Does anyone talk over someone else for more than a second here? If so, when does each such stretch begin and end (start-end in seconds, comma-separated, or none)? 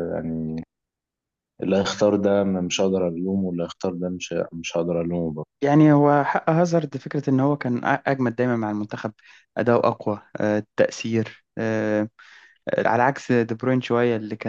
none